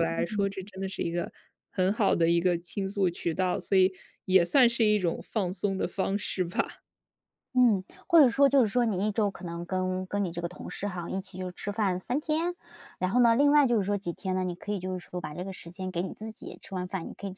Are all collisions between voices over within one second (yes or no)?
yes